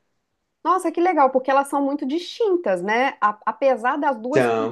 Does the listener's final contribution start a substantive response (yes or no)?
no